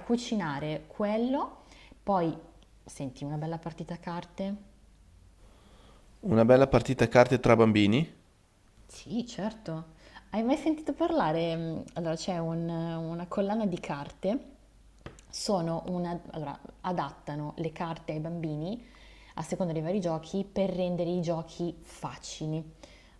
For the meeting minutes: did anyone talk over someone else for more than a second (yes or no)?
no